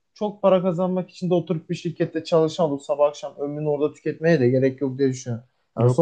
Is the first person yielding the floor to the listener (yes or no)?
no